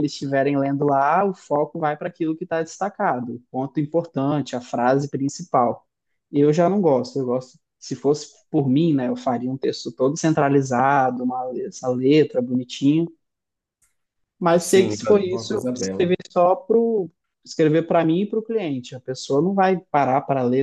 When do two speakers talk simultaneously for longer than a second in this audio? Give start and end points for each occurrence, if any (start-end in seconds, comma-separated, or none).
14.6-16.1